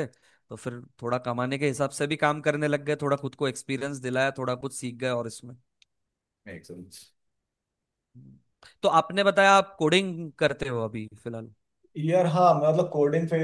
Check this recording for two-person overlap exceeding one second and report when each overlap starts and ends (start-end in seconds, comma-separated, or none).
none